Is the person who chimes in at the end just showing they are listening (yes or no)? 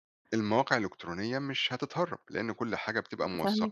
yes